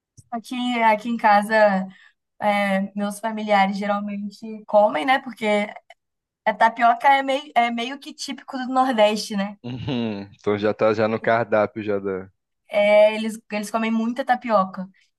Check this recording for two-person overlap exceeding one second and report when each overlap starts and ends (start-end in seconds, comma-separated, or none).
none